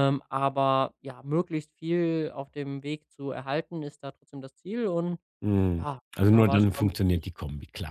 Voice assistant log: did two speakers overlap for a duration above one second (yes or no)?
yes